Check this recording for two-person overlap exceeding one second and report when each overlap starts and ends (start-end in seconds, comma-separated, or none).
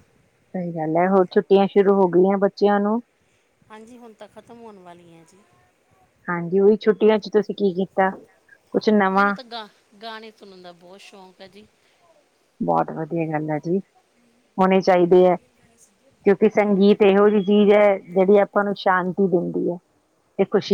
none